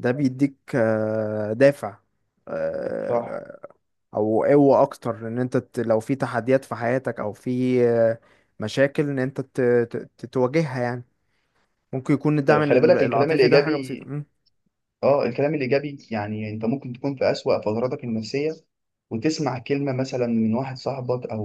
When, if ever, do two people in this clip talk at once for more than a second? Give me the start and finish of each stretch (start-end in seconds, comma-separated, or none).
12.5-14.0